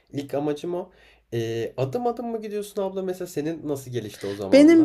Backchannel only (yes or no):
no